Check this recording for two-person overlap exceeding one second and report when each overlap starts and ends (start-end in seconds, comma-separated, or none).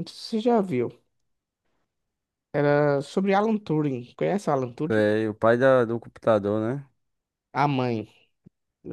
none